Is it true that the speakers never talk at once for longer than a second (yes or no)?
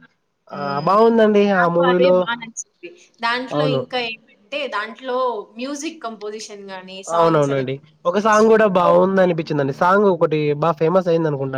no